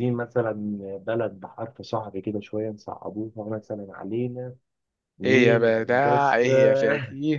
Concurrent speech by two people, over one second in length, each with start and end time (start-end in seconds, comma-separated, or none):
5.2-6.5